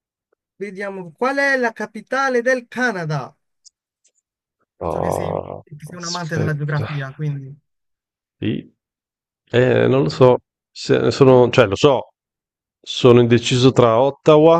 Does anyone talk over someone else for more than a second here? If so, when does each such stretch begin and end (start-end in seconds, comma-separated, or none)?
4.9-6.9